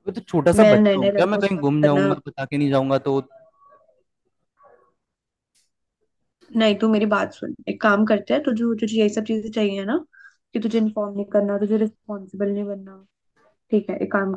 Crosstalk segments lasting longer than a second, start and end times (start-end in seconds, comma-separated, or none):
0.6-2.1